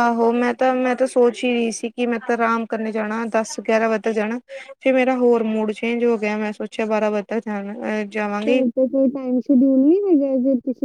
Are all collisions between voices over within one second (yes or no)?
yes